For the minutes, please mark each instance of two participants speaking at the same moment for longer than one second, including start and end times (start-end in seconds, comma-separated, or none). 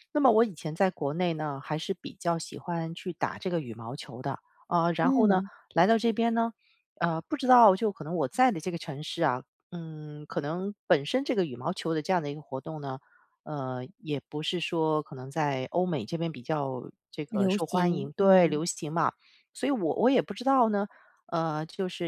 17.3-18.6